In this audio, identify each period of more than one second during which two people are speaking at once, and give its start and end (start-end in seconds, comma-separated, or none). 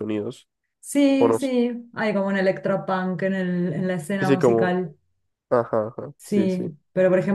none